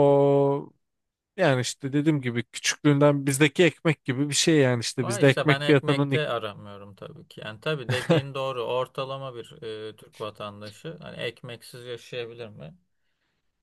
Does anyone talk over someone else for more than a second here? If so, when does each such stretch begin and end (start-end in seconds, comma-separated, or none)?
5.0-6.4